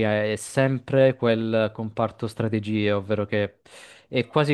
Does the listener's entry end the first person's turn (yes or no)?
no